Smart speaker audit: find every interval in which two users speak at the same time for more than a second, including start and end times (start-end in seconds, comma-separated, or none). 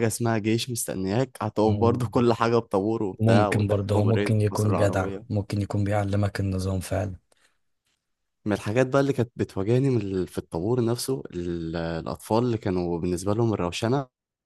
3.2-5.2